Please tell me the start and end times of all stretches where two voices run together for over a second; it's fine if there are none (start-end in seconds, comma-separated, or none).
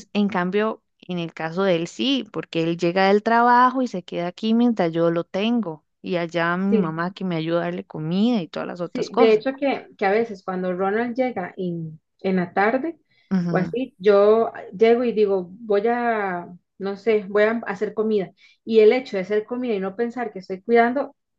none